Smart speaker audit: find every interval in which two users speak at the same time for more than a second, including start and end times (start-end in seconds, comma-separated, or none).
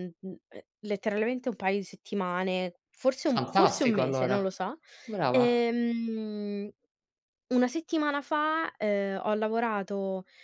3.2-4.5